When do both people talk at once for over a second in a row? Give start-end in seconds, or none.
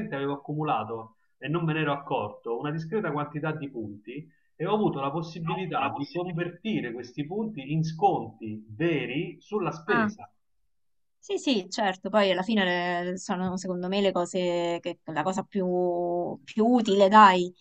none